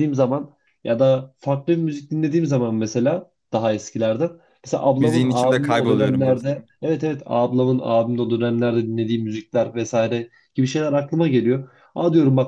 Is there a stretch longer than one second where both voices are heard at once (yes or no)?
yes